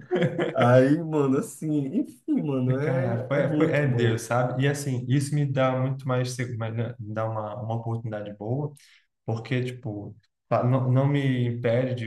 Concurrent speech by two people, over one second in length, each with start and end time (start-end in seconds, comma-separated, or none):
2.8-4.2